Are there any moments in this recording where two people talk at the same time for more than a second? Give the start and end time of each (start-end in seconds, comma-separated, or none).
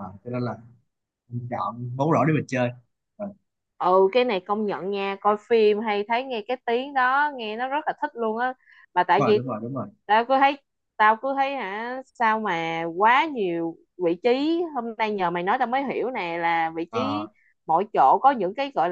none